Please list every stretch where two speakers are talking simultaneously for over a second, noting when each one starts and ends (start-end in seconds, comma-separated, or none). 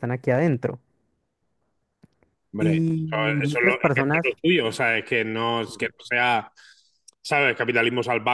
2.6-4.3